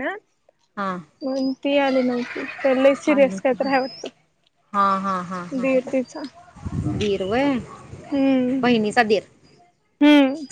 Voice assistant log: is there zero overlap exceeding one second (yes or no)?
yes